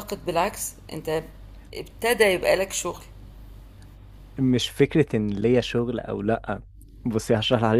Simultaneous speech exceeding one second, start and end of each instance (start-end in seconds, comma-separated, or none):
none